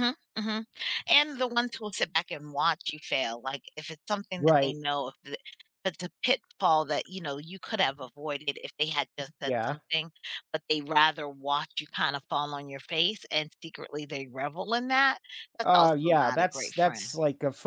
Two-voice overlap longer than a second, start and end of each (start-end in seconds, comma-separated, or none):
15.6-17.1